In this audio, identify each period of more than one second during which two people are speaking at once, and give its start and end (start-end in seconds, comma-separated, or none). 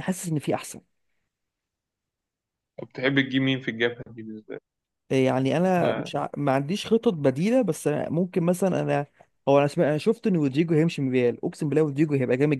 none